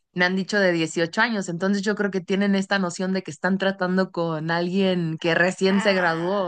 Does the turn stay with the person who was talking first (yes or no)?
no